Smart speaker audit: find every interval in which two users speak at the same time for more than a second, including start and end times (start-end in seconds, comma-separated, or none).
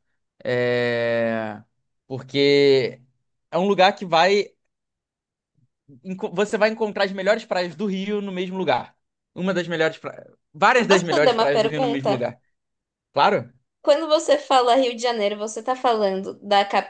10.9-12.2